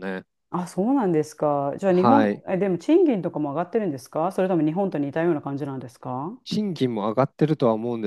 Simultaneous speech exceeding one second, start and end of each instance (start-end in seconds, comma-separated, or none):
none